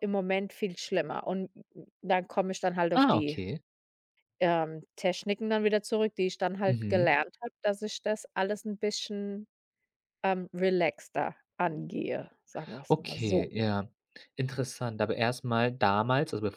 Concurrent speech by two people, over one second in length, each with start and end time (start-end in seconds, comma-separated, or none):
none